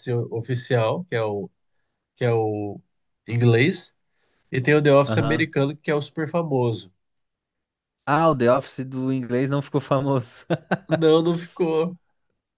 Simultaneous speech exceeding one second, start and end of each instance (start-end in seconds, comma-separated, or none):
none